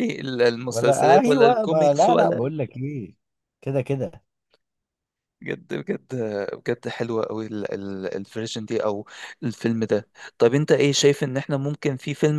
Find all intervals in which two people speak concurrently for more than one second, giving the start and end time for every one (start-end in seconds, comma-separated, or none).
0.7-2.4